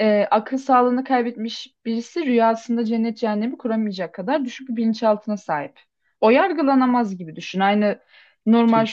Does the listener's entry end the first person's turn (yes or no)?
no